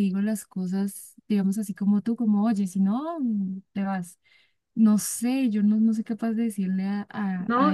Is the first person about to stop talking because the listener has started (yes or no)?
yes